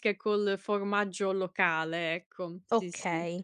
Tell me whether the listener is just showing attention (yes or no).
no